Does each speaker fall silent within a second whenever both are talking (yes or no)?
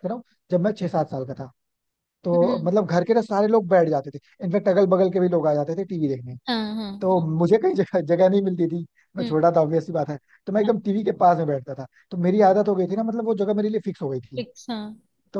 yes